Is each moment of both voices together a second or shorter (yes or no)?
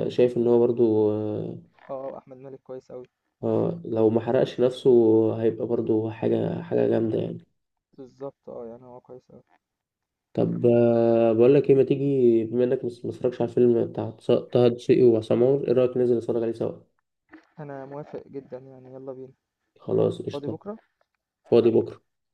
yes